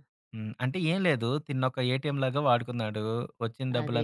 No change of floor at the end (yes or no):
yes